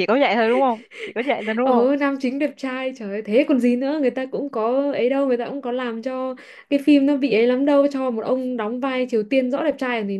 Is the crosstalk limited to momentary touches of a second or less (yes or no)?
yes